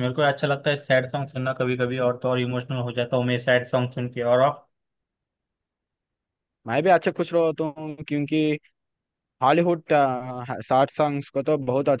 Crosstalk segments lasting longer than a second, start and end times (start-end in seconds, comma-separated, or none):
none